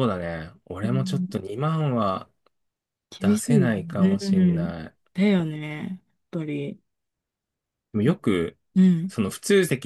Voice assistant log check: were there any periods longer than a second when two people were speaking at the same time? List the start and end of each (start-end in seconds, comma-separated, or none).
3.2-4.7